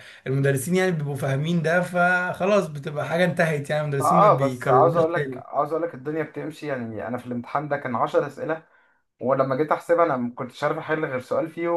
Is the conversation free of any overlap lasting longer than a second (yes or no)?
no